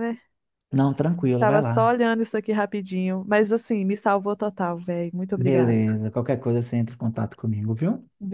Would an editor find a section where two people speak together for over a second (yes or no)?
no